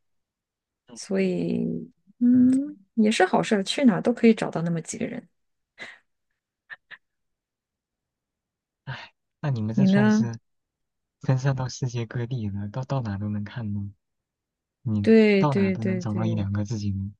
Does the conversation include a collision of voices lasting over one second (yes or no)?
yes